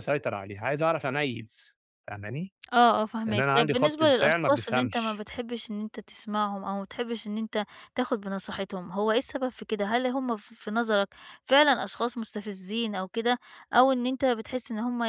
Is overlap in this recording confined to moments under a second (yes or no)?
no